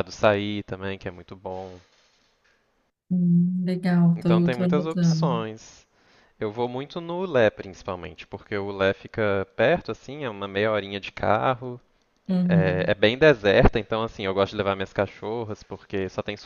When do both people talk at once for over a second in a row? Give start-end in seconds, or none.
4.2-5.4